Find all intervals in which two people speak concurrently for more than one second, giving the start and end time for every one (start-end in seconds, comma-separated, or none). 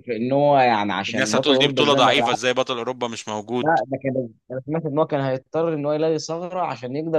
1.1-2.3